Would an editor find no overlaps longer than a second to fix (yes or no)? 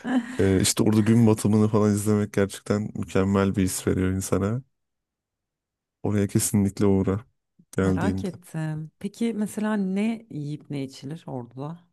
yes